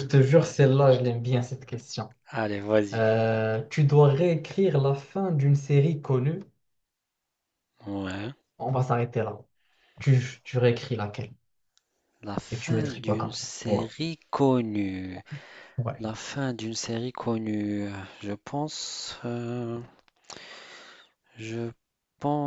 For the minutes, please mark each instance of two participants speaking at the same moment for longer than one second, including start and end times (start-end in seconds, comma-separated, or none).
12.5-13.8